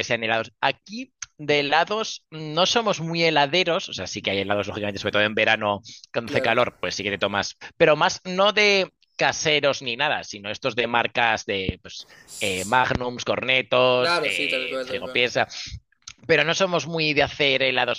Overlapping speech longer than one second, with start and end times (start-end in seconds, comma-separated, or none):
14.0-15.2